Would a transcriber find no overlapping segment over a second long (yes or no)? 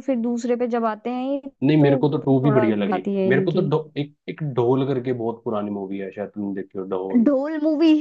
no